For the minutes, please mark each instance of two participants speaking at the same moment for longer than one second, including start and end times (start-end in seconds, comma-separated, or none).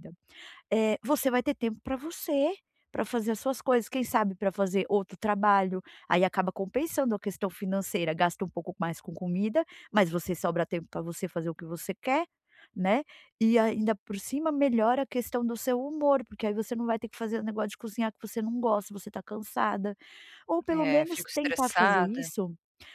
20.7-22.3